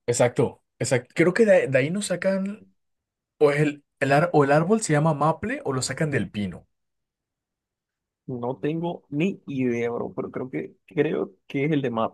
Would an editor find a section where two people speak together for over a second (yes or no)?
no